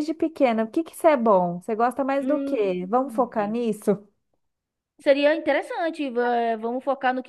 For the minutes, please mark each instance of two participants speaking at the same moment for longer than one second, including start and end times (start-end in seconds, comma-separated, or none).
2.2-3.6